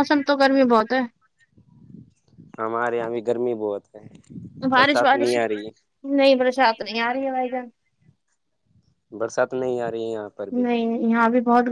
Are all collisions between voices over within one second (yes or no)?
yes